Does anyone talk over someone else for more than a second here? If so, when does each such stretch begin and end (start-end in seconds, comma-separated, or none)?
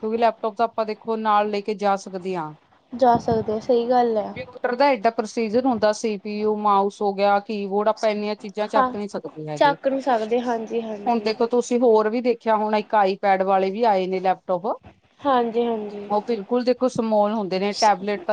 none